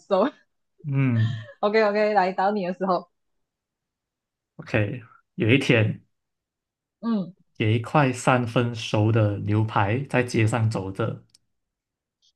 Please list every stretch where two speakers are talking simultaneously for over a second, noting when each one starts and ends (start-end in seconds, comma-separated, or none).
none